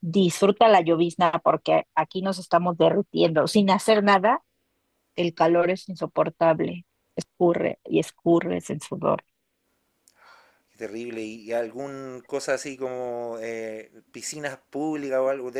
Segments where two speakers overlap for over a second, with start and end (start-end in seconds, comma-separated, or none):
none